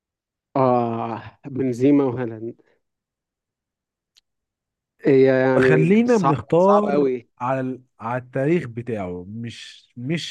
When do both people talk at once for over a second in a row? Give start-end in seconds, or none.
5.6-7.3